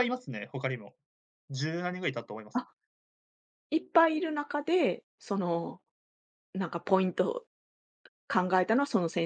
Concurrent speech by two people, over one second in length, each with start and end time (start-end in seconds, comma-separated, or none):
none